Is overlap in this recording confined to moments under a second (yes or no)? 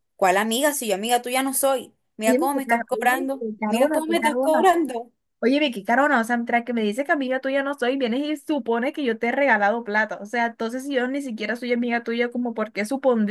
no